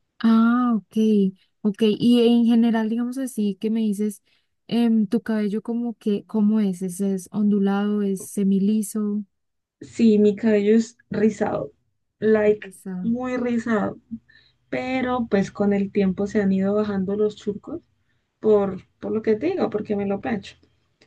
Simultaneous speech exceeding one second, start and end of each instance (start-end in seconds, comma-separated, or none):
none